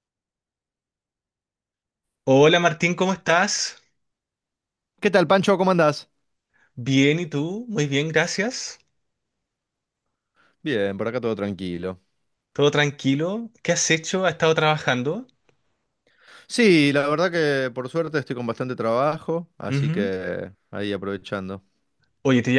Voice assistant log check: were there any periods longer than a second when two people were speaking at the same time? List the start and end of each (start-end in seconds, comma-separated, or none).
none